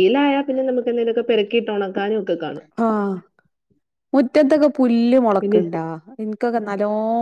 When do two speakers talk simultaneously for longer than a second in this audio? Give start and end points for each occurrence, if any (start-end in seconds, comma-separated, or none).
none